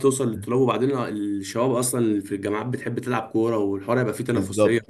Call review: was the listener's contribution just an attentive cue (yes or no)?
no